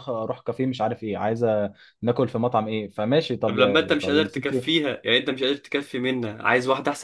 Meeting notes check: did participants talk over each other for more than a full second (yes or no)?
yes